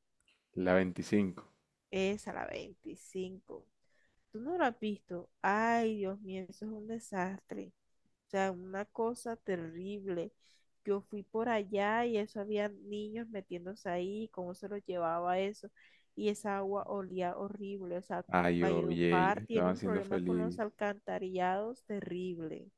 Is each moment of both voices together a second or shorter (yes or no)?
no